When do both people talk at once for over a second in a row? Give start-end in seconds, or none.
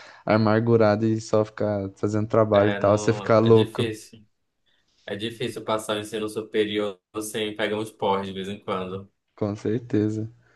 2.5-3.9